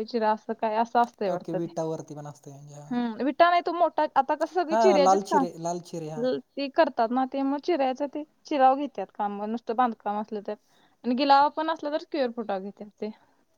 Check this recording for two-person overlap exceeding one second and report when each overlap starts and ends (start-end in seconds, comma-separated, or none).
4.7-6.2